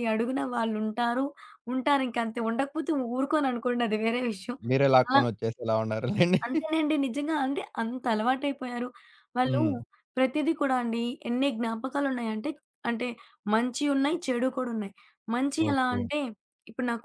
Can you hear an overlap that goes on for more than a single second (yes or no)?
no